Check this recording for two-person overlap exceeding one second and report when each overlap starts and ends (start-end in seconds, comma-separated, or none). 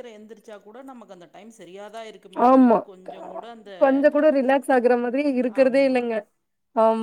none